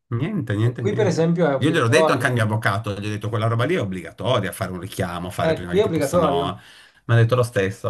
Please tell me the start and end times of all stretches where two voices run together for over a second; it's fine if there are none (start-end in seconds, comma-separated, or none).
0.6-2.4, 5.4-6.6